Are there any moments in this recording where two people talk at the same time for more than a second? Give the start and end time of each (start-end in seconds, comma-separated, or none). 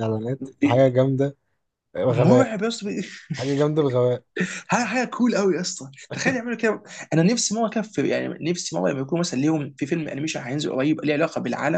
none